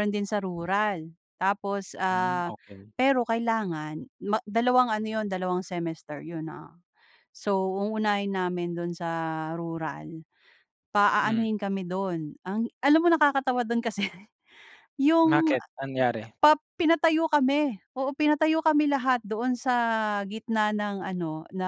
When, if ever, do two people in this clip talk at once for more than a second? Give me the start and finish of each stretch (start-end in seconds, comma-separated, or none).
none